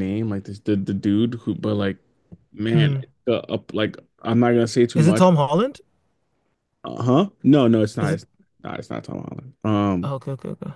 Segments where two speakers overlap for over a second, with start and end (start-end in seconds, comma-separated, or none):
none